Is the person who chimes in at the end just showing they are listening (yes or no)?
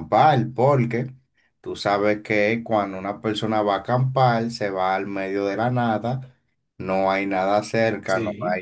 yes